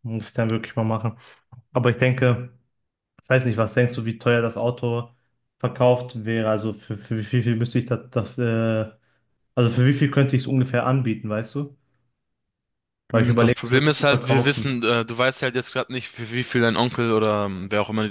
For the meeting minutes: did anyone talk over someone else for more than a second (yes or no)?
yes